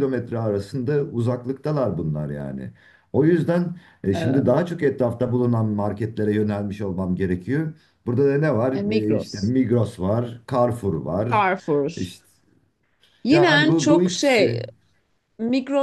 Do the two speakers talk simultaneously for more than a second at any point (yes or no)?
yes